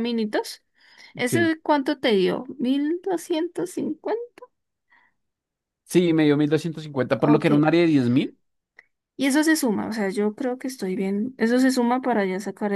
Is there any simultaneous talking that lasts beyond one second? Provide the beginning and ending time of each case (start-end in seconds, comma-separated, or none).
none